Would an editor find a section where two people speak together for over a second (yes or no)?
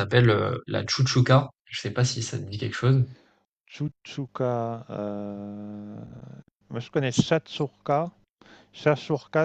no